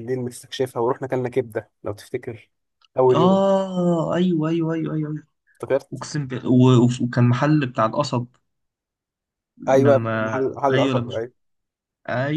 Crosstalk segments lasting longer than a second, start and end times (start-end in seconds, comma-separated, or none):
9.7-11.2